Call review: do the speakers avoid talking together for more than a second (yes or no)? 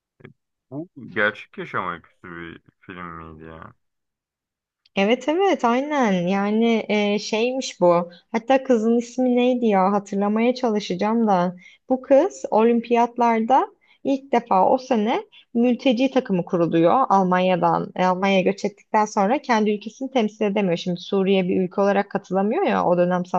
yes